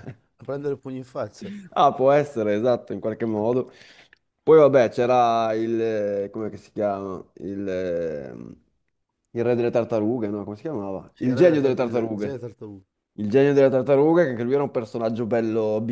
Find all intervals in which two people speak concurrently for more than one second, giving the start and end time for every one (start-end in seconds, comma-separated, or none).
11.1-12.4